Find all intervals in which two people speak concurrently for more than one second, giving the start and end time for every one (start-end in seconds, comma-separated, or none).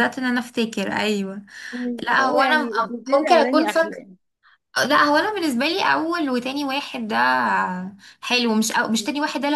2.0-4.0